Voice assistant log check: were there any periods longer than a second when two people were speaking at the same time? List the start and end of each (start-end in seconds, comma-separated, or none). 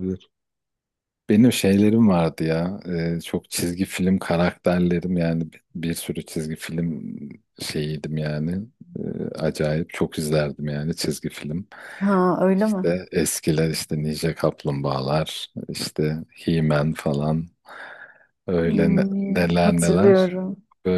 18.6-20.3